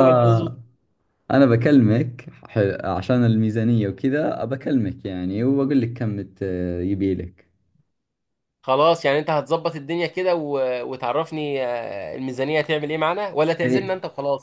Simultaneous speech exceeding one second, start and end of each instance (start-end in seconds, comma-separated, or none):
none